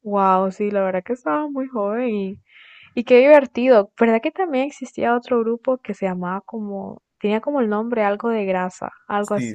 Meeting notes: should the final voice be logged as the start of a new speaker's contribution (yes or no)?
yes